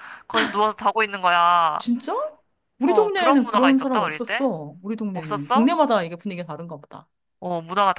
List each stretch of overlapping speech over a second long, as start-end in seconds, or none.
2.9-4.5